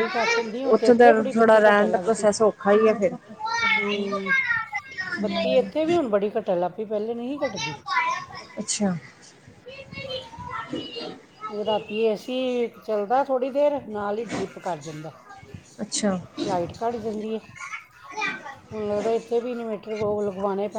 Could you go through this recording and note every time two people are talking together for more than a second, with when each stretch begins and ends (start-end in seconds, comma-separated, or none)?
0.7-2.3